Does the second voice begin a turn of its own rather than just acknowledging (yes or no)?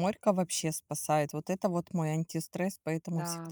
no